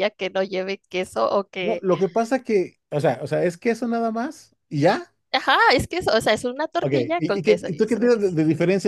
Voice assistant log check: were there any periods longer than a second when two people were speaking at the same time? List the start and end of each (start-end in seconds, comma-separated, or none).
6.8-8.4